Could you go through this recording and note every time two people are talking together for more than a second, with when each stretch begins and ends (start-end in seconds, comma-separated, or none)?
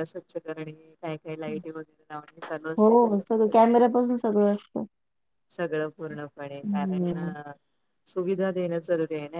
none